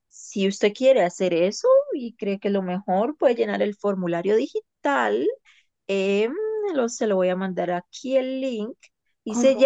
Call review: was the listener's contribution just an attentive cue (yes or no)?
yes